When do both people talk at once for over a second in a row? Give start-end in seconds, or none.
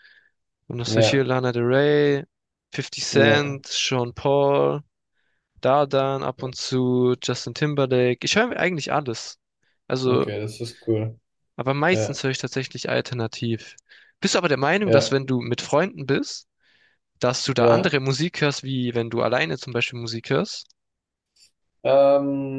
none